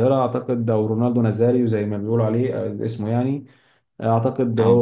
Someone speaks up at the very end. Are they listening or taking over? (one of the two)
listening